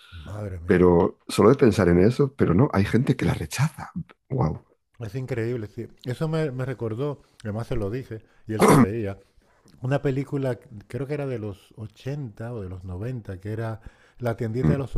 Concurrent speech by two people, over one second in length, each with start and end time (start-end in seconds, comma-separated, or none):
none